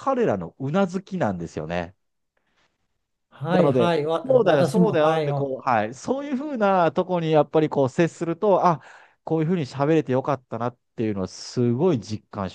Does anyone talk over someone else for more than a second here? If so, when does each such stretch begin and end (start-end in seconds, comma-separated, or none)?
3.5-5.5